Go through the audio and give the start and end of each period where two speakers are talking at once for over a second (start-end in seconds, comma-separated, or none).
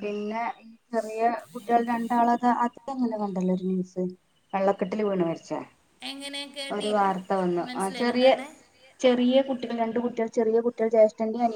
none